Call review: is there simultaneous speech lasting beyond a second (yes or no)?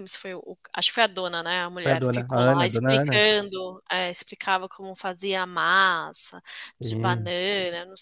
yes